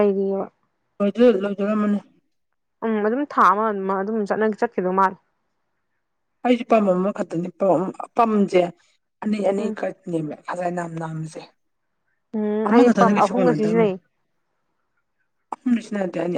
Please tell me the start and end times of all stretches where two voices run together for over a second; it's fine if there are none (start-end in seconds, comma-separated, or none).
12.7-13.9